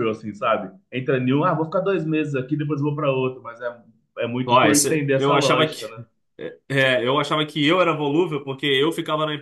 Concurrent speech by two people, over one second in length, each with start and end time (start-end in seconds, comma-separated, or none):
4.5-5.9